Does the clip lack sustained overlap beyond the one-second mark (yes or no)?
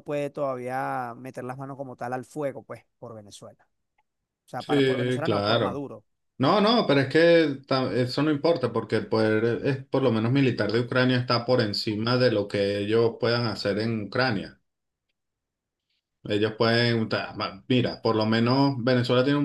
no